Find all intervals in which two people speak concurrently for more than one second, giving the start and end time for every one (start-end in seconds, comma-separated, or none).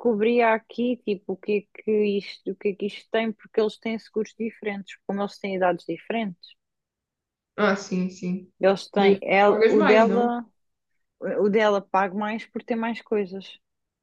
8.9-10.3